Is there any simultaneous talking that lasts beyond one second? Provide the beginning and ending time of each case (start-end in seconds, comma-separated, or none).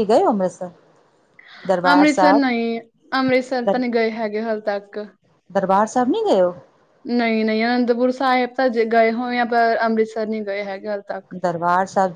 none